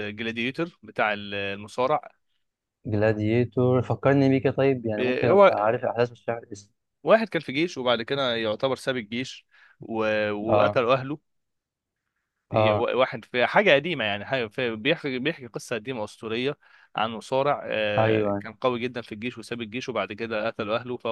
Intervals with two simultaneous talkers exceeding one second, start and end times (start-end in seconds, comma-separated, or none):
none